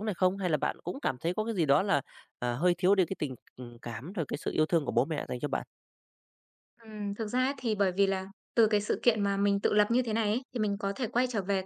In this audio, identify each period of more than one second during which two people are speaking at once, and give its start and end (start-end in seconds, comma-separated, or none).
none